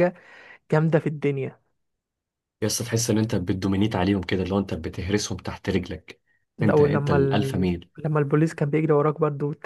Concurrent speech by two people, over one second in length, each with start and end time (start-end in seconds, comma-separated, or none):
6.6-7.9